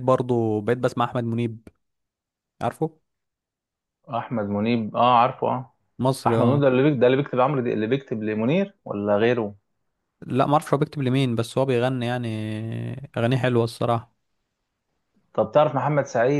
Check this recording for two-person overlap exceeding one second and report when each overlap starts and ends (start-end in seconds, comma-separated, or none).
none